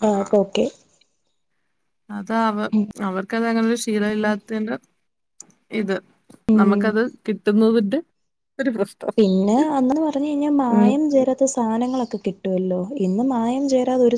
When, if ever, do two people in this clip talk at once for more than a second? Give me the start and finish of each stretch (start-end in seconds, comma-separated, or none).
none